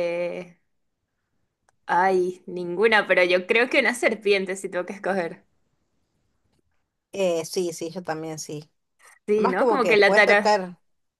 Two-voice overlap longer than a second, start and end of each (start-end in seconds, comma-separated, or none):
9.3-10.7